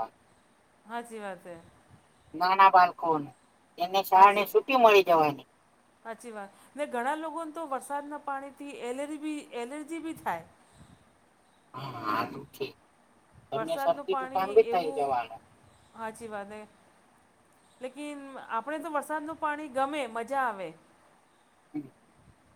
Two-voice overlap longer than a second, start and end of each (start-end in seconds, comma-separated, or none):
none